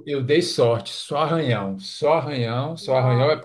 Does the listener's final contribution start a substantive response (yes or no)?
no